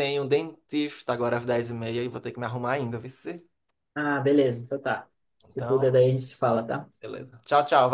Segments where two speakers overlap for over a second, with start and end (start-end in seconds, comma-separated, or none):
none